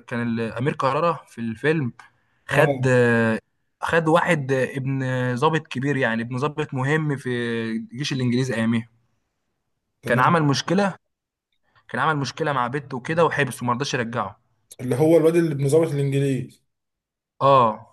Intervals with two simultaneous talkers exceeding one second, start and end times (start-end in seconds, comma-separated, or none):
none